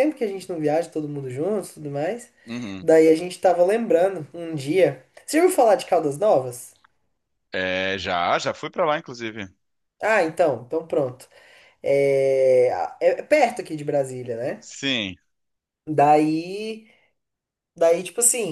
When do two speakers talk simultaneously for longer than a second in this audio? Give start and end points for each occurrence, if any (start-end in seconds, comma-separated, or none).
none